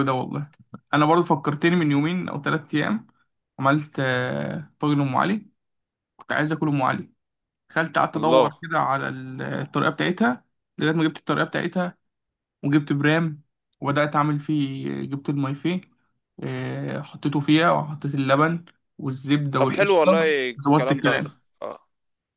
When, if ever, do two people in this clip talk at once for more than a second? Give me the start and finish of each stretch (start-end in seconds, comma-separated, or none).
19.6-21.2